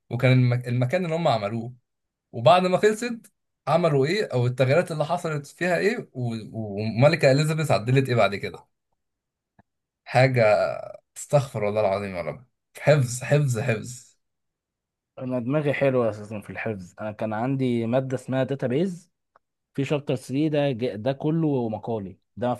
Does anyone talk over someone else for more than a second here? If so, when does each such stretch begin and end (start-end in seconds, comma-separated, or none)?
none